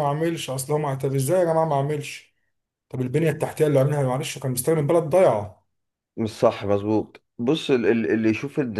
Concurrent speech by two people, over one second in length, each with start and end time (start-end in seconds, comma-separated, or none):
none